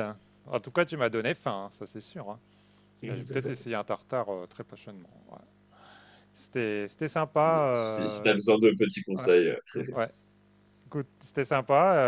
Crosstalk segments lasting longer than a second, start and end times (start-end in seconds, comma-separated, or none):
none